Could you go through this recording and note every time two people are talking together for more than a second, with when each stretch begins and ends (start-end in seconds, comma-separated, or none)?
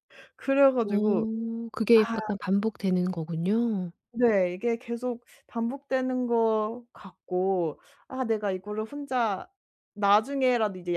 none